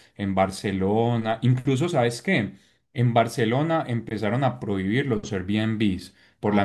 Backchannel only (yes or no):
yes